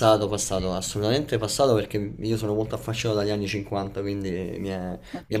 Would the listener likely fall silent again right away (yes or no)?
no